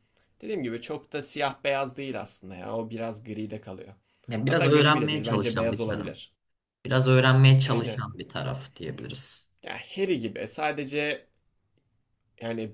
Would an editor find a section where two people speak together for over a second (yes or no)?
yes